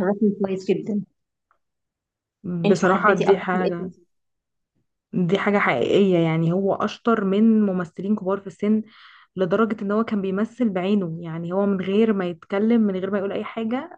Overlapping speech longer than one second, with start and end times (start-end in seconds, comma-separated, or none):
2.6-3.9